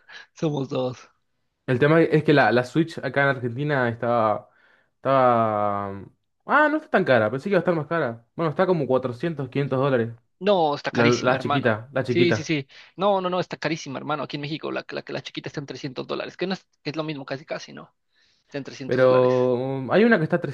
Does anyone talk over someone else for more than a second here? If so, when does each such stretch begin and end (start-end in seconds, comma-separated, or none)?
10.9-12.5